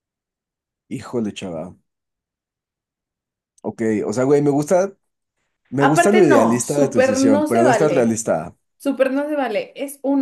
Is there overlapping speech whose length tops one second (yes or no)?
yes